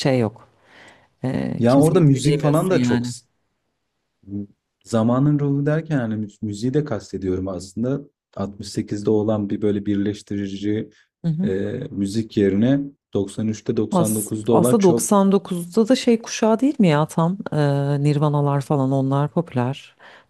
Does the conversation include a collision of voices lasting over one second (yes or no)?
yes